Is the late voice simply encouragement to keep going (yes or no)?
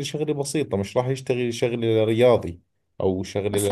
no